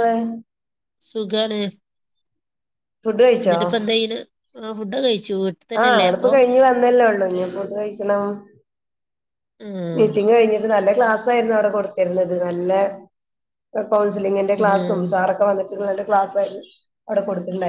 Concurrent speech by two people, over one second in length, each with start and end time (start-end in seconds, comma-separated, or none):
none